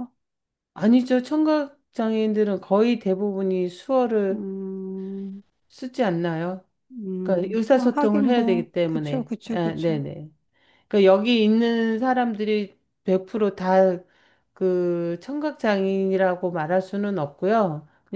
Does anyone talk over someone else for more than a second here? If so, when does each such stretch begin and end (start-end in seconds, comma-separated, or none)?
7.2-10.0